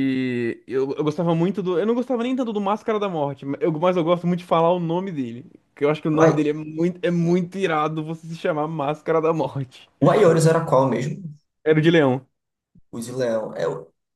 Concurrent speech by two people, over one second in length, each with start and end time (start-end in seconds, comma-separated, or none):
none